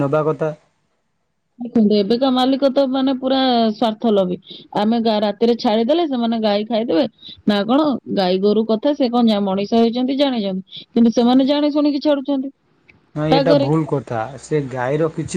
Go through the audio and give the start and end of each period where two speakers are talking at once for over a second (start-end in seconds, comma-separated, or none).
none